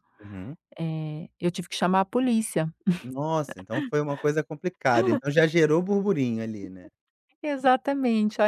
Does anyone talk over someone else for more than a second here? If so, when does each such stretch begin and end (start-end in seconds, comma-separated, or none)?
none